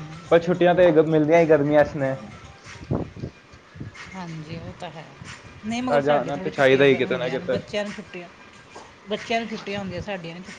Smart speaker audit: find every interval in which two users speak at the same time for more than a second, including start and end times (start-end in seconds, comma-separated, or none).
5.9-7.6